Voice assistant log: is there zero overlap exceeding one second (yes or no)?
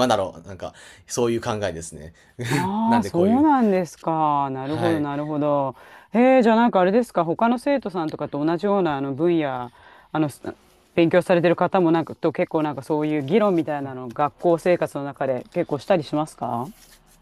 yes